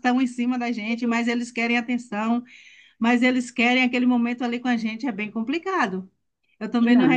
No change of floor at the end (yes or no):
yes